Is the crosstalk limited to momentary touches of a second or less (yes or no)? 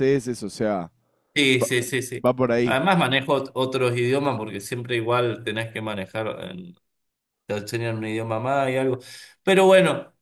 yes